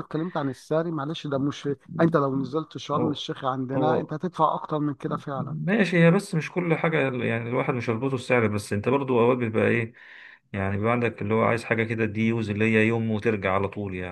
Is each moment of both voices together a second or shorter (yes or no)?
yes